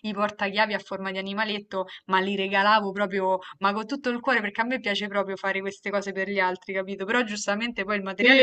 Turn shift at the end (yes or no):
yes